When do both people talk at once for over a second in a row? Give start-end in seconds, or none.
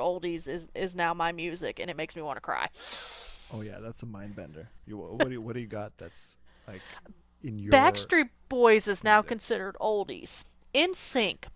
none